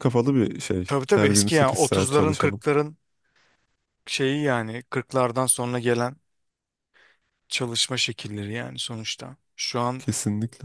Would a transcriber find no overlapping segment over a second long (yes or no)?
no